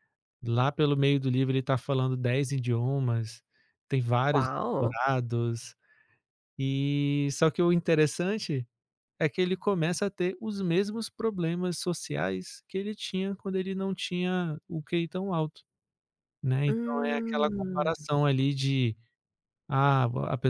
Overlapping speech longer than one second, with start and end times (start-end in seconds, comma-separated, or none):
16.7-17.9